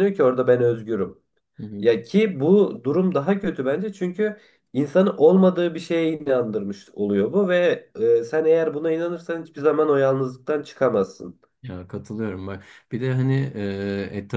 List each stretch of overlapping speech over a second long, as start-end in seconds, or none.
none